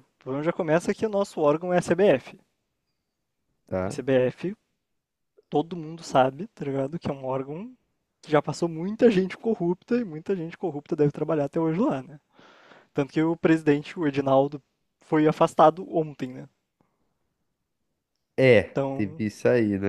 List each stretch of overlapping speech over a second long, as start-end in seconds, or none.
none